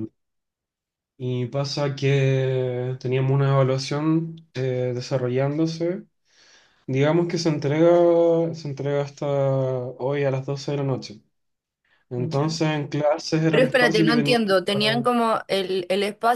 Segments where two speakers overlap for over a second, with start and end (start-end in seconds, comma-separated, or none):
13.5-15.1